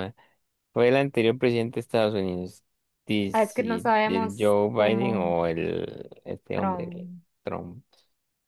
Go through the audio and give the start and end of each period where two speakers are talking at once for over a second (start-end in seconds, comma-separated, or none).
3.3-5.3